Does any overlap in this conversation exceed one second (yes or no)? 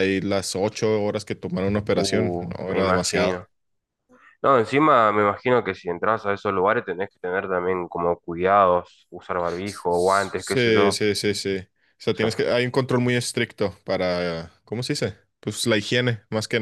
yes